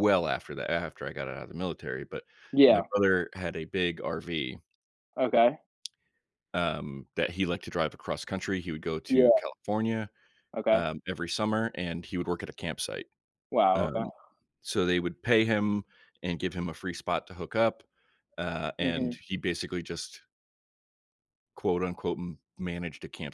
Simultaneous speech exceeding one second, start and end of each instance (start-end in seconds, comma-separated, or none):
none